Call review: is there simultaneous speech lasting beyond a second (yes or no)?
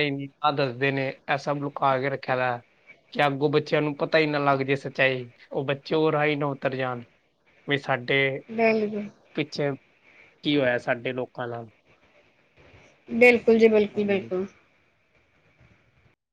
no